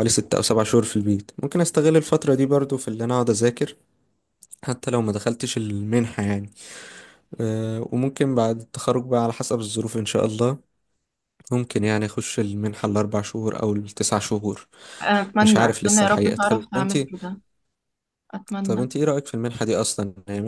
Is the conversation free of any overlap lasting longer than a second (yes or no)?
no